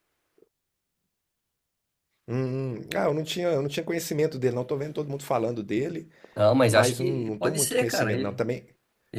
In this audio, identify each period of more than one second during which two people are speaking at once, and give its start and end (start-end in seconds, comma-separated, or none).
6.7-8.4